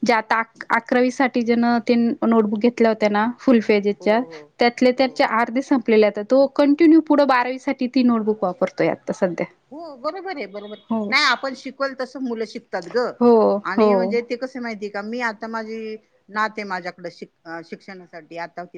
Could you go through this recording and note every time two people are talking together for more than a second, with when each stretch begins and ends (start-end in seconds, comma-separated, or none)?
none